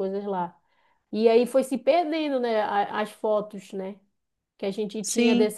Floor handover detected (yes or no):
no